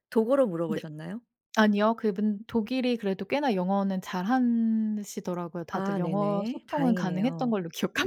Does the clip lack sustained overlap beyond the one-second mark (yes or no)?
no